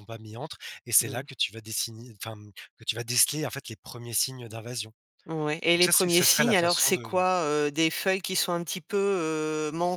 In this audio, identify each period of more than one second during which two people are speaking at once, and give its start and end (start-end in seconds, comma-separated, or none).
5.8-7.1